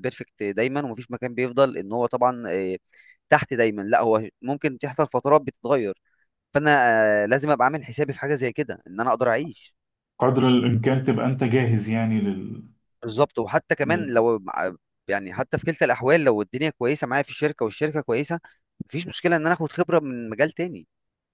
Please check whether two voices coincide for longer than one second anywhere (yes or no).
no